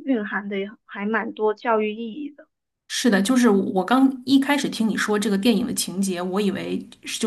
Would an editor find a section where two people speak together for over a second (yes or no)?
no